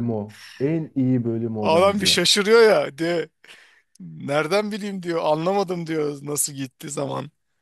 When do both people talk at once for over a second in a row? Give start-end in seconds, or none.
none